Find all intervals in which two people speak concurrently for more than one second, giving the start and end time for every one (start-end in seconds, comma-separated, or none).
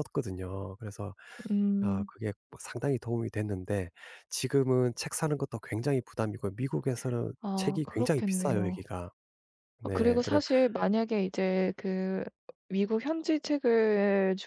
7.4-8.9